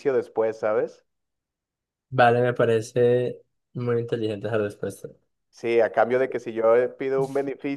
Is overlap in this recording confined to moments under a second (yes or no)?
yes